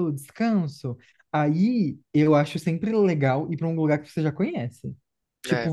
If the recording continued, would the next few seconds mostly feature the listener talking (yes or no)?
no